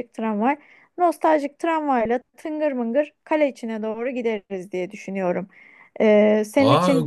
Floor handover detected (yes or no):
yes